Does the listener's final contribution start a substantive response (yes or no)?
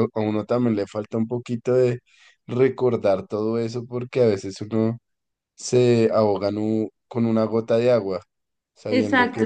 yes